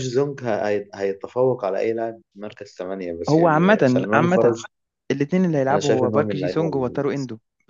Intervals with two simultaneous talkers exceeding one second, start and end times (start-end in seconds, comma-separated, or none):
3.3-4.5, 5.7-7.0